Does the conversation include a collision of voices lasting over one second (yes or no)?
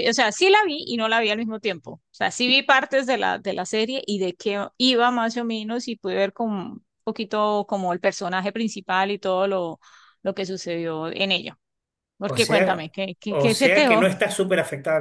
yes